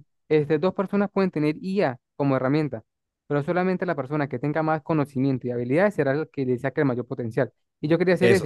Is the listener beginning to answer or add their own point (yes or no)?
no